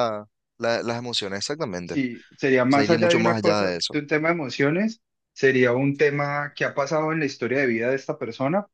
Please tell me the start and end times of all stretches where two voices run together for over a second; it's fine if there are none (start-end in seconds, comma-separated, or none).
2.7-4.0